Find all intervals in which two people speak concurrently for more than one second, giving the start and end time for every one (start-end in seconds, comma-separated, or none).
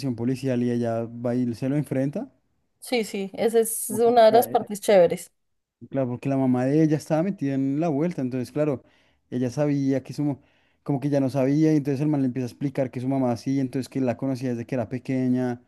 none